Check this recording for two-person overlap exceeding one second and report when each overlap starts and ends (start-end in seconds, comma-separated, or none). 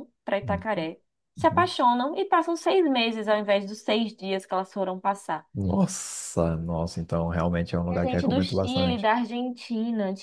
7.9-9.1